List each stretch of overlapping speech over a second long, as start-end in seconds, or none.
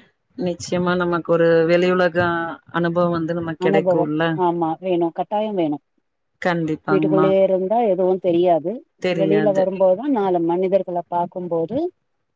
none